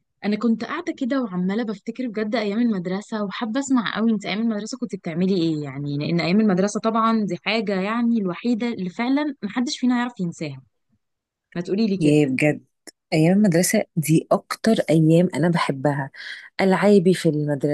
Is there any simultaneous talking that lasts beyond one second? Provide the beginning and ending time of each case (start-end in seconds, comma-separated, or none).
none